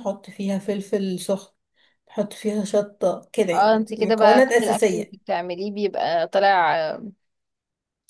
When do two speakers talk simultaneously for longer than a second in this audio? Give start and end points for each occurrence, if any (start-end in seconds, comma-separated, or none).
3.5-5.2